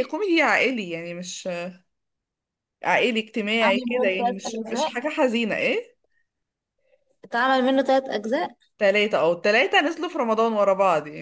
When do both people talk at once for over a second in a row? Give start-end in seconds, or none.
3.6-4.9